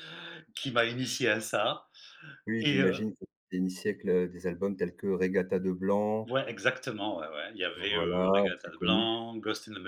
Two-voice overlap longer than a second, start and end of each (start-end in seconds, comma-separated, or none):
7.9-9.2